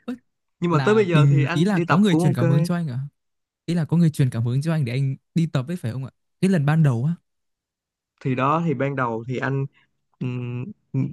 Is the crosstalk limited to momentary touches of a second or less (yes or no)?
no